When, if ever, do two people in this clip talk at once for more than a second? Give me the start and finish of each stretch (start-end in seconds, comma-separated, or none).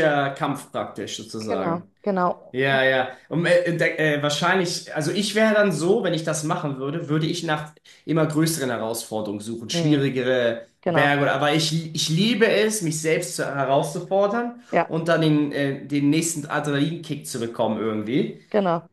none